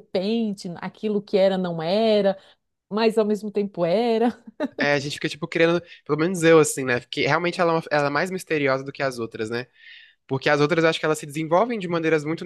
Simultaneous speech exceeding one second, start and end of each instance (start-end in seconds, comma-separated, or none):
none